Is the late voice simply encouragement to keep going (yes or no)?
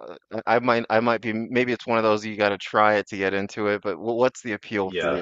no